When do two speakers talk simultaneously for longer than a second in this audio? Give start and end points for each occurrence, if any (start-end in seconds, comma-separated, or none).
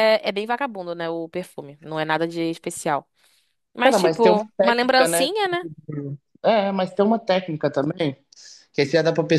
3.8-5.3